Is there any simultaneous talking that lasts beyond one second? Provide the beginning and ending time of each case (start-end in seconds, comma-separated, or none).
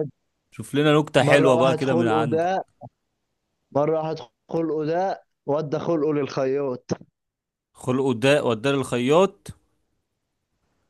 1.2-2.5